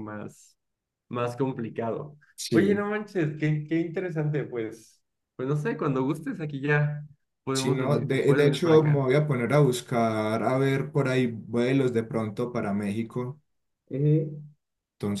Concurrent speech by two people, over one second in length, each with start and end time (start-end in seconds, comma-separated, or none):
7.5-9.1